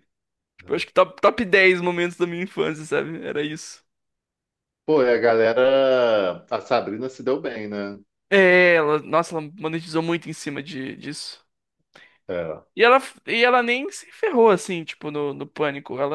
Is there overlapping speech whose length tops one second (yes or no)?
no